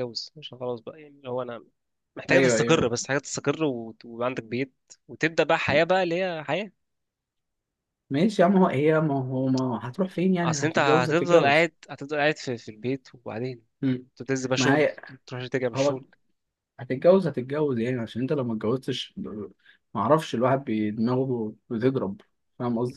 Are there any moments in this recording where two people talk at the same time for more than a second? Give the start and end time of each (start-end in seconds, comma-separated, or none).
10.4-11.7